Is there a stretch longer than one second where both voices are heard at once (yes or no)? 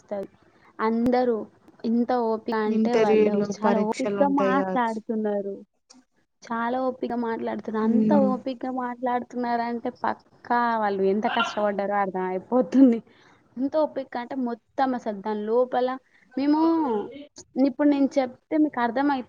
yes